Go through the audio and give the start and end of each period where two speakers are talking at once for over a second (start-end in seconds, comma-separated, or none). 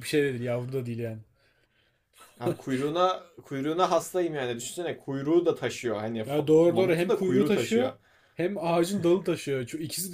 6.2-7.9